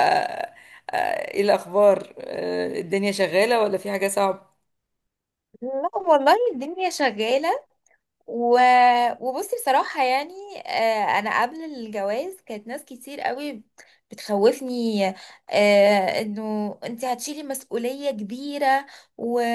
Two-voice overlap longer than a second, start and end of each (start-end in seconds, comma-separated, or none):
none